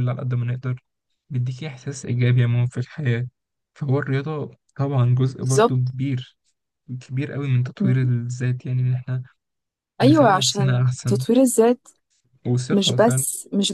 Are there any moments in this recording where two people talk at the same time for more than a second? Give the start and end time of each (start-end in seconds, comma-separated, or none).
10.0-11.2